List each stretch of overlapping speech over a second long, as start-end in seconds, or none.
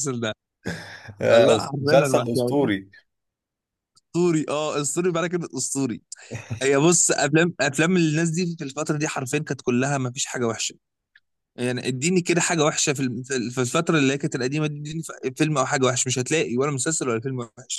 1.3-2.7